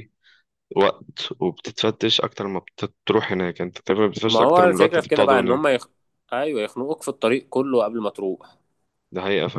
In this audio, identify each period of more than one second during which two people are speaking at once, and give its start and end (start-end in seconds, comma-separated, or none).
4.3-5.8